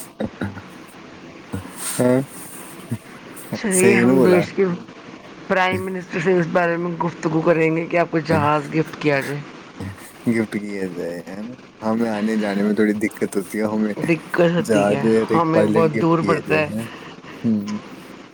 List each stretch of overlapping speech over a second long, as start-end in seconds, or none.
14.6-16.6